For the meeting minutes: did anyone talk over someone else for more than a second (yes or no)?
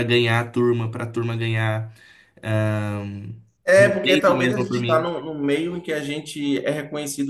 yes